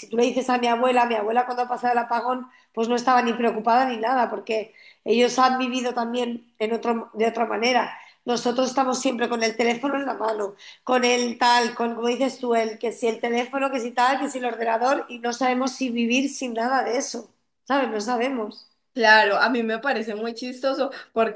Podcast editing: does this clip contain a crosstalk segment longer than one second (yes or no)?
no